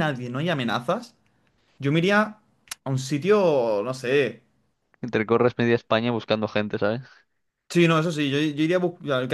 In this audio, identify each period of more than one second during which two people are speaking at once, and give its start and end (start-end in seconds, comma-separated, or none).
none